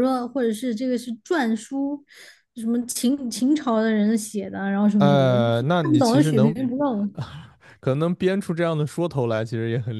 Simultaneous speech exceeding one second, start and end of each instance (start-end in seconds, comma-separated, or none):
5.0-6.6